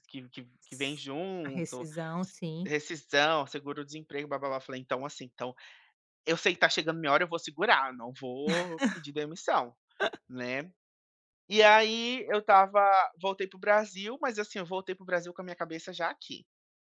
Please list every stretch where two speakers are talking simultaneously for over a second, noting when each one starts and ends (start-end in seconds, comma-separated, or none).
0.6-2.7